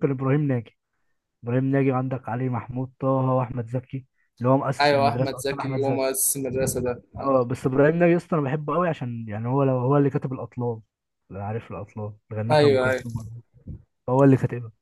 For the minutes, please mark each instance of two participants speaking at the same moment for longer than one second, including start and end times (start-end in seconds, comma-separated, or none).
4.8-6.1